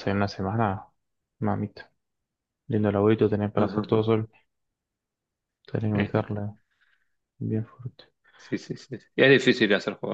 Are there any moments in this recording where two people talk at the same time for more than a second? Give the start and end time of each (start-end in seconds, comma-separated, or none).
none